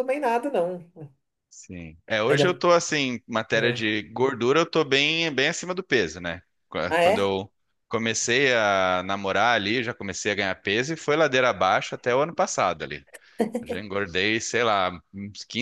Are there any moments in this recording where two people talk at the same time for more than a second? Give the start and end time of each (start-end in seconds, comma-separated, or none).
none